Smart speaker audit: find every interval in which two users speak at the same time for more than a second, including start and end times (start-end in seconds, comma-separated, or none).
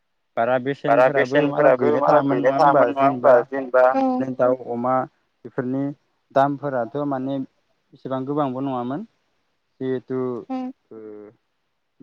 0.9-3.3